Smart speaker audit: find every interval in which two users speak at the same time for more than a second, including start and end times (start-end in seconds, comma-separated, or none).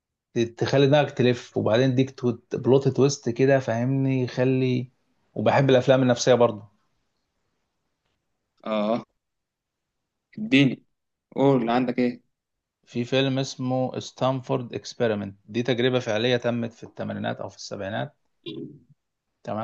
none